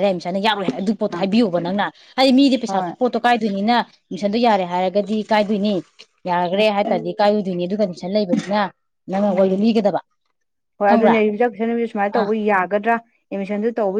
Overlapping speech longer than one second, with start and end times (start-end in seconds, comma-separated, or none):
none